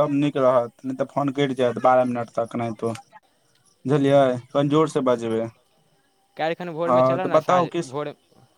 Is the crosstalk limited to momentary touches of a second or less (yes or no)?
yes